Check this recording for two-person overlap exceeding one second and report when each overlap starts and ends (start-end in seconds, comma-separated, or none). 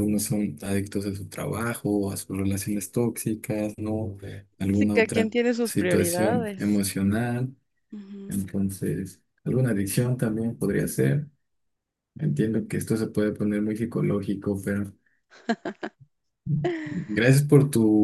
4.7-6.8